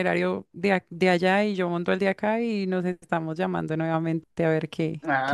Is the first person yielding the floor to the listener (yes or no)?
yes